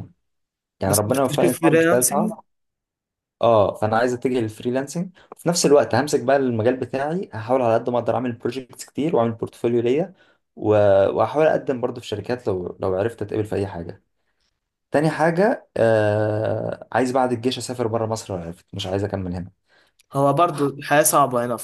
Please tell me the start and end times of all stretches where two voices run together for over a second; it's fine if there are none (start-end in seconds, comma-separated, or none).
0.9-2.3